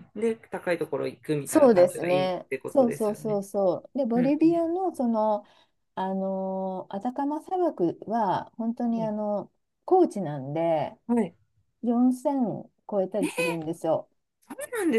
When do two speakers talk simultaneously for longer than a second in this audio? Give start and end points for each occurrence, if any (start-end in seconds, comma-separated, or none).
1.4-3.4